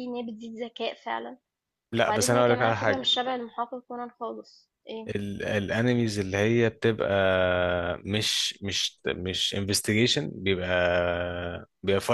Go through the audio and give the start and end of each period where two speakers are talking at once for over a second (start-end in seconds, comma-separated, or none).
1.9-3.1